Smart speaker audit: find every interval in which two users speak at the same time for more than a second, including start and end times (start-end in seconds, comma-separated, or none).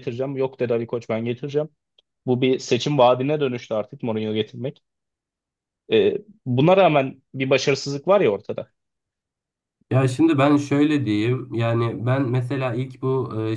none